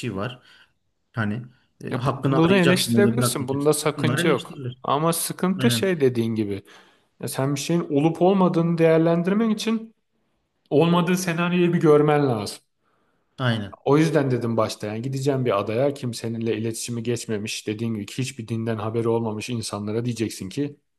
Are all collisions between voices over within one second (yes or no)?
no